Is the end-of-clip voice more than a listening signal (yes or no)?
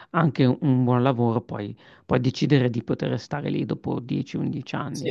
yes